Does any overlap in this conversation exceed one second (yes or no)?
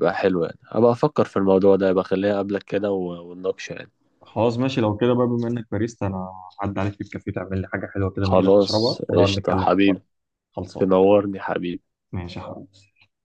yes